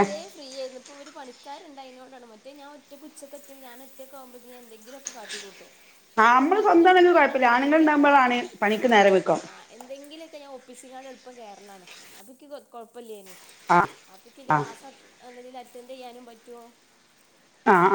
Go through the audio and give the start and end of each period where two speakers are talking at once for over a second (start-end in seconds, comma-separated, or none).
6.2-8.1